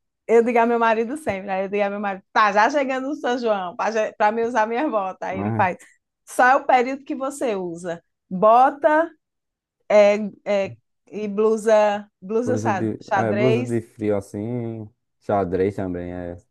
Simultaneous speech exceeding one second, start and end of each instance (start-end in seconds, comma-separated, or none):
12.4-13.8